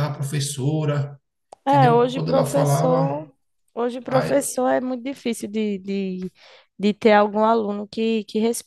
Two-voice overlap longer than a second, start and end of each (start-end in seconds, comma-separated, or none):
1.6-3.3